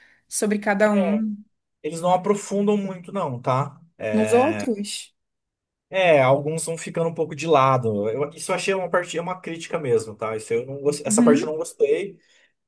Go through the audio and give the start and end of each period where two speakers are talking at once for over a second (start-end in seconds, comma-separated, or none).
none